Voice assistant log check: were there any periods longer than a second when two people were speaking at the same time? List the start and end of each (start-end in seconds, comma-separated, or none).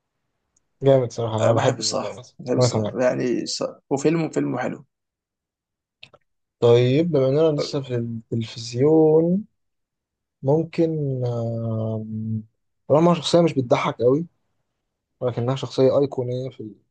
1.4-3.0